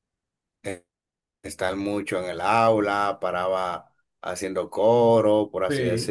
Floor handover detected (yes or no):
no